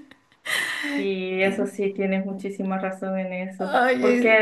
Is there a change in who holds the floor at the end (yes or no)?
no